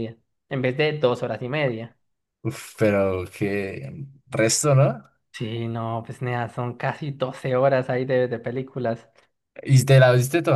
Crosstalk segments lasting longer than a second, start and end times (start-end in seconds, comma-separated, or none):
none